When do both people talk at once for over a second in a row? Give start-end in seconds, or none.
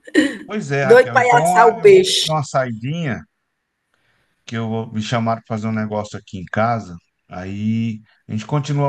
0.8-2.4